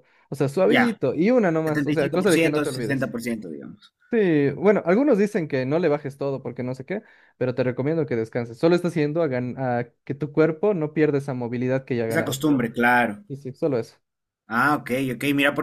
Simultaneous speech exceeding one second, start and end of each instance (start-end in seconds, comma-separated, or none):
1.6-3.1